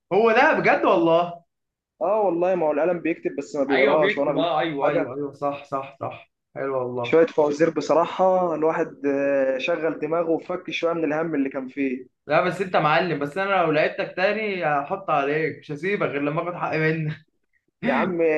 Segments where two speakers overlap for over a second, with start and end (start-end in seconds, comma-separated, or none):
3.7-5.1